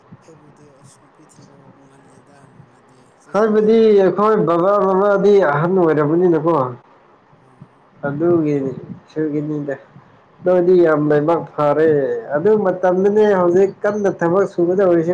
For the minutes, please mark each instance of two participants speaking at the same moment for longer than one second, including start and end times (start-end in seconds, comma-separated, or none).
none